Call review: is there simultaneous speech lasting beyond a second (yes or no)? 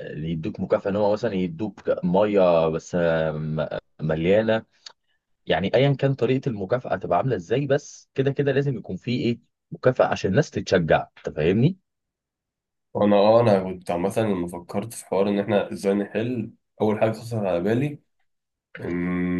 no